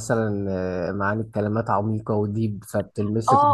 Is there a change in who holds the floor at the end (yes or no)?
yes